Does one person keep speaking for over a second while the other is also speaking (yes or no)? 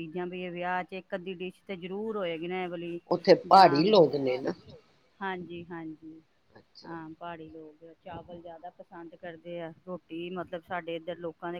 no